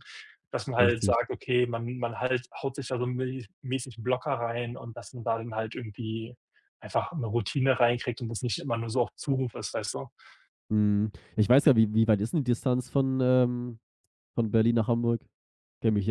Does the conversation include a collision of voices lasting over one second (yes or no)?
no